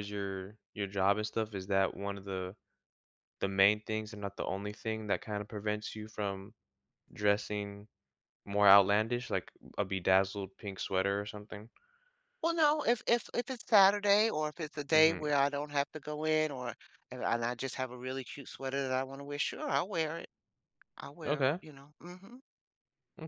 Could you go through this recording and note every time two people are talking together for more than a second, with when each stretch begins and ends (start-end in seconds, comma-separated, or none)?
none